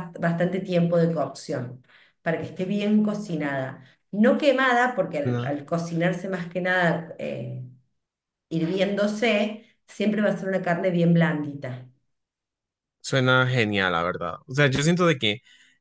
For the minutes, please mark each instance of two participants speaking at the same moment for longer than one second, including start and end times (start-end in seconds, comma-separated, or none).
none